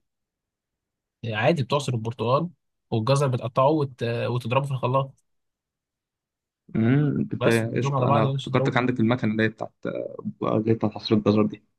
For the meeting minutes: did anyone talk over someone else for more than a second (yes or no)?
yes